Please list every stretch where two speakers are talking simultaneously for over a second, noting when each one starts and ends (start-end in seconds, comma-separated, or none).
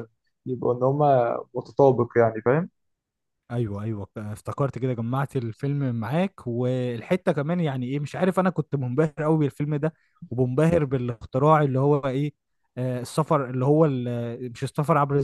none